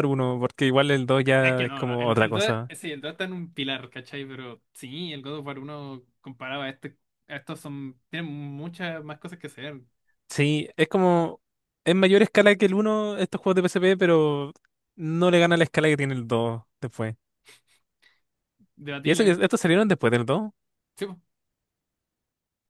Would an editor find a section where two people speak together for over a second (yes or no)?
yes